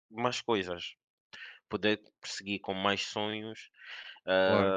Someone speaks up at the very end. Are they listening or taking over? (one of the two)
listening